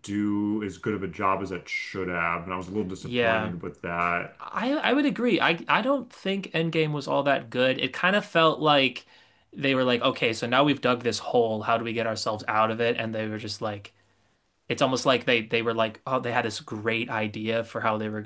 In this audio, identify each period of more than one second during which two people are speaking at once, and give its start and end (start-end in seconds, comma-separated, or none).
none